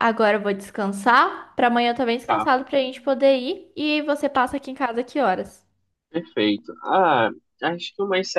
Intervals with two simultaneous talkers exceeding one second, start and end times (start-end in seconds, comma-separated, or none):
none